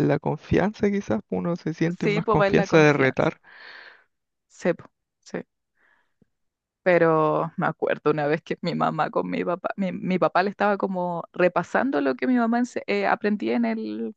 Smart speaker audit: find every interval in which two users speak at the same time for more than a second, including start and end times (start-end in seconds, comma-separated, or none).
2.0-3.3